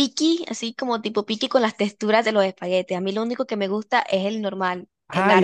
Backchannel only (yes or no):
no